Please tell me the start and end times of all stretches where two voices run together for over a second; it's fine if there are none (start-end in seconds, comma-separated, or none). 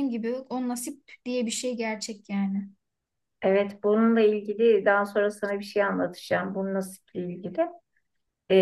none